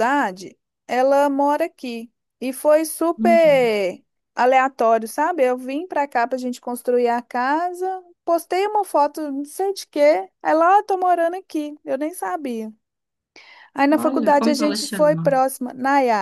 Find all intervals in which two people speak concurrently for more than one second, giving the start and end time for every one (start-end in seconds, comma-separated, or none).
14.0-15.4